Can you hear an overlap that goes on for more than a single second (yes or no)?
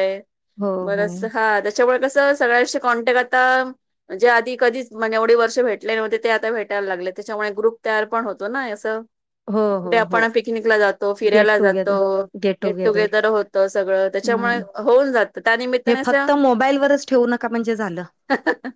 no